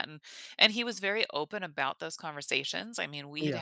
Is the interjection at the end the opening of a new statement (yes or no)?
no